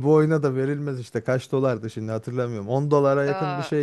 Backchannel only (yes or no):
no